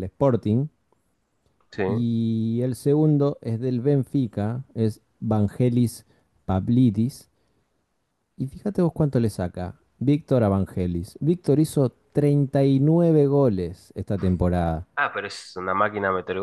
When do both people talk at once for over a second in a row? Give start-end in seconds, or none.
none